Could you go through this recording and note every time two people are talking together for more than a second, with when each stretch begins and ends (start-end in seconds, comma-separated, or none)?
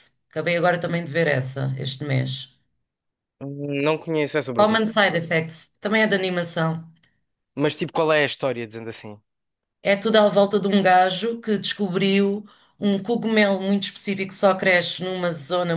none